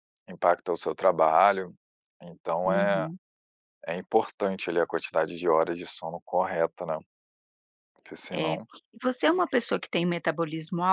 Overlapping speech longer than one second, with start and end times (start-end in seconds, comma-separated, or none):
none